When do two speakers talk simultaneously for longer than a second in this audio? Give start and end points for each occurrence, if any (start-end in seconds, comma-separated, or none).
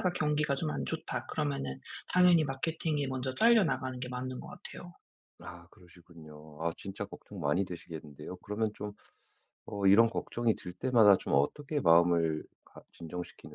none